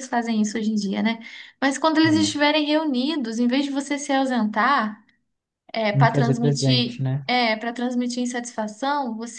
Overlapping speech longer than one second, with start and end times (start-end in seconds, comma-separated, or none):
5.9-7.3